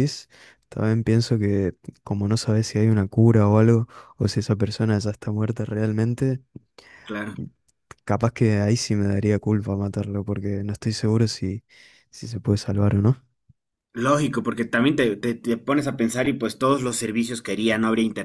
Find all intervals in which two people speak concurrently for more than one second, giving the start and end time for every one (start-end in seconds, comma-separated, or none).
none